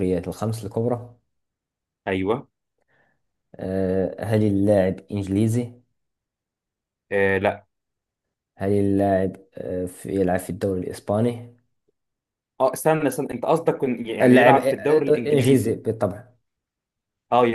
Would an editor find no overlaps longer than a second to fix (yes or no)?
no